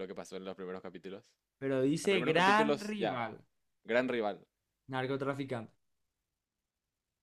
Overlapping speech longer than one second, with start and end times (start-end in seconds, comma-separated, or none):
2.0-3.2